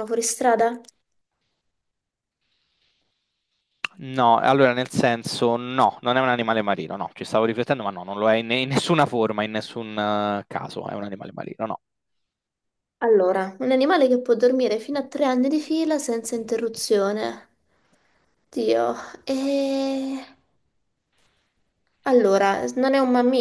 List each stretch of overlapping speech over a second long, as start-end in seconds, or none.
none